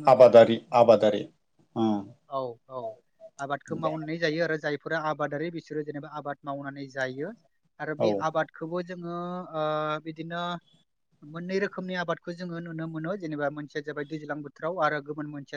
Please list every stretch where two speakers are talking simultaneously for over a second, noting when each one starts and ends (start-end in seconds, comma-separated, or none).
none